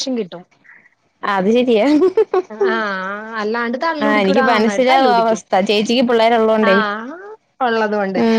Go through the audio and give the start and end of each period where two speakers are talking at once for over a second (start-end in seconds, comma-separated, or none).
4.0-5.4